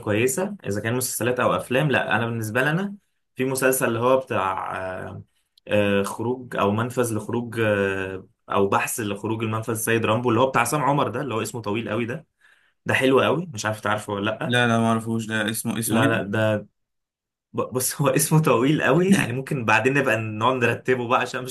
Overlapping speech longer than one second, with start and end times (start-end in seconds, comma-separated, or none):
none